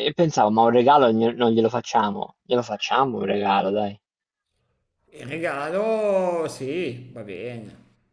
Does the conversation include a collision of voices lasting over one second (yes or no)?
no